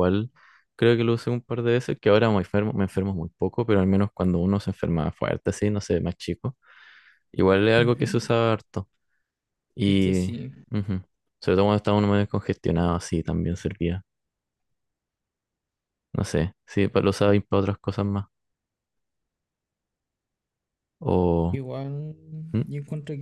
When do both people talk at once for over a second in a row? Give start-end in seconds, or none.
none